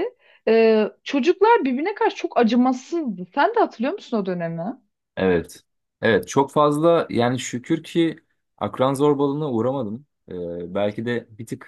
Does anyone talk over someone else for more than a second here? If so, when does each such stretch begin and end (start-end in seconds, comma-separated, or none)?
none